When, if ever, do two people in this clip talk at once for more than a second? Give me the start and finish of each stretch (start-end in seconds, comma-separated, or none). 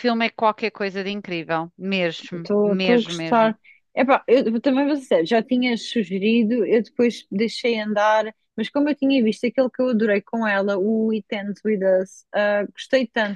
2.3-3.5